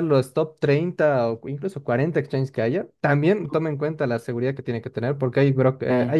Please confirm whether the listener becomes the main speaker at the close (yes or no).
no